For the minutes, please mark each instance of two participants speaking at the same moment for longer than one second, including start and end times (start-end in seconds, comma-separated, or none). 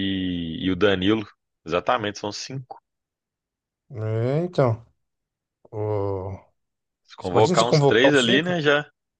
7.2-8.6